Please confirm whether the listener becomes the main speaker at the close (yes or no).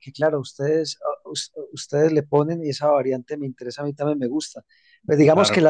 no